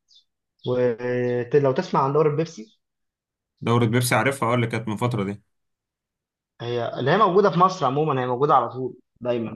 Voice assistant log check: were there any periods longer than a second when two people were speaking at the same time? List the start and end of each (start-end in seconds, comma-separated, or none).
none